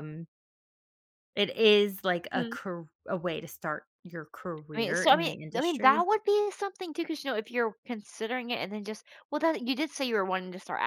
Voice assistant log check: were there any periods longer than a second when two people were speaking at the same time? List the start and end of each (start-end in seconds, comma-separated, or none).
4.8-6.1